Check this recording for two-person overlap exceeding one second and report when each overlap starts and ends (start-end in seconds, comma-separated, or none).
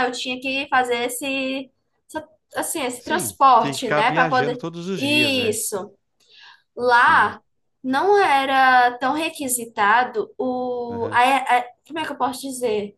3.0-5.6